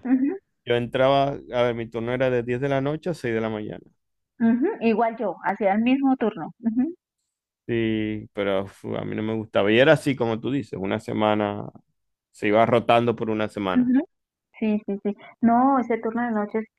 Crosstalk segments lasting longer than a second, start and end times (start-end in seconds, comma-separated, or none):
none